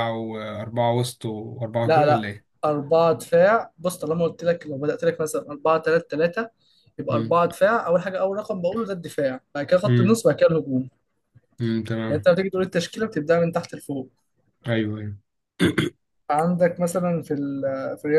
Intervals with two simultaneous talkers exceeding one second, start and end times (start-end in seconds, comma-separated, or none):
none